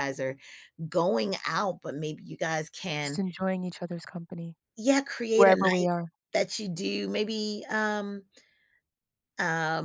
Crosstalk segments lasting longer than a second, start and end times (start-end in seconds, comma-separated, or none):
none